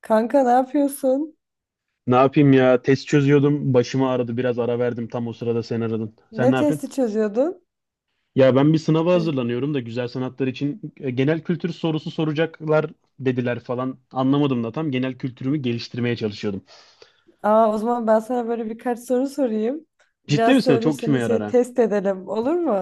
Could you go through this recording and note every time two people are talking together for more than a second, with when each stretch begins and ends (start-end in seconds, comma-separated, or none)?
20.3-21.6